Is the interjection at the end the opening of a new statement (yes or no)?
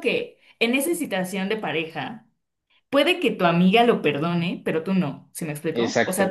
no